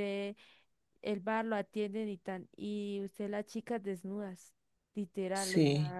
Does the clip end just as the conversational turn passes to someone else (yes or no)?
no